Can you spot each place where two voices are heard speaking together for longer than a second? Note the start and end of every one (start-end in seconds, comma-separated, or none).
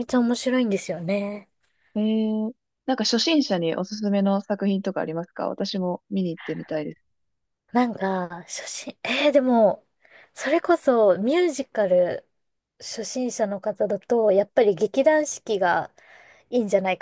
none